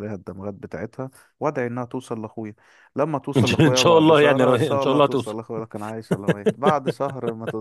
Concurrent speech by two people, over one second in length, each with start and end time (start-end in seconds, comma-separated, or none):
3.4-5.3